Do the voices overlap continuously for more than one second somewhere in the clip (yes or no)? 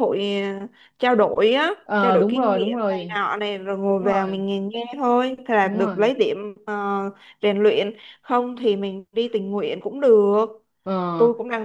yes